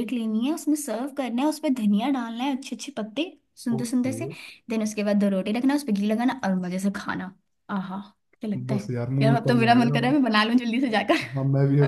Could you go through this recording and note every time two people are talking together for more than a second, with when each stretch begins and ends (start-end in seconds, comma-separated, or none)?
8.7-10.2